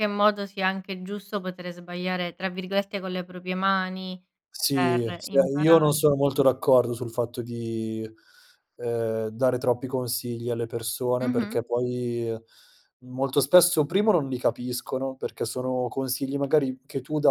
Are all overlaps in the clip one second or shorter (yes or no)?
no